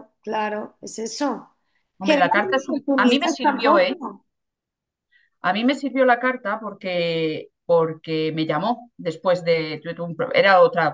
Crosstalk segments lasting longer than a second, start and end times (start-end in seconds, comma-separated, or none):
2.0-3.9